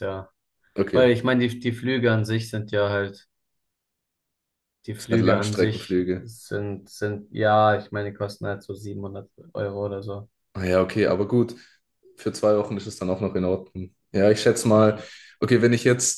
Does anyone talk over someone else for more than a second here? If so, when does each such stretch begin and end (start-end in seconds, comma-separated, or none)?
5.0-6.3